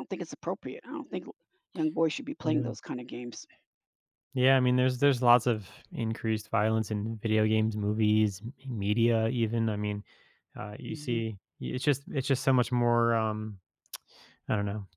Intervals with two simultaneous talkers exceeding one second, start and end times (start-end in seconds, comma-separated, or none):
none